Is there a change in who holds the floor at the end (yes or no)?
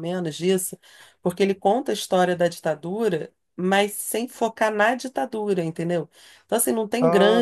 no